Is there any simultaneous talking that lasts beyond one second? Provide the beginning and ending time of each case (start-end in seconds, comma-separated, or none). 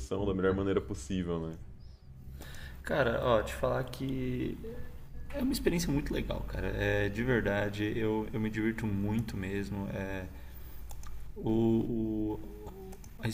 none